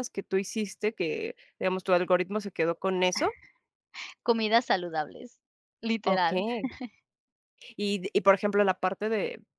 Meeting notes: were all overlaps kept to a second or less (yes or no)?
yes